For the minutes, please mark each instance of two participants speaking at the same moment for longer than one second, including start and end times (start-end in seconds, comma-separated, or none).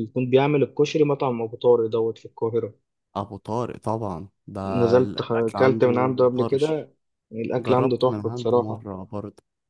5.0-6.9, 7.6-8.8